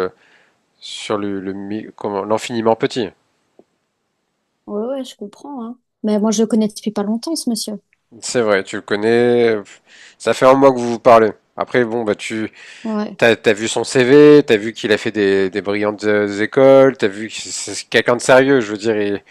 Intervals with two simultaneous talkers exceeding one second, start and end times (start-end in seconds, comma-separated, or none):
none